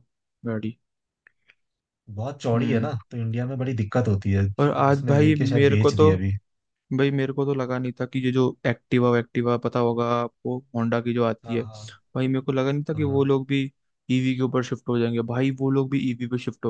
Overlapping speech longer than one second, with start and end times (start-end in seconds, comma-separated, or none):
4.9-6.1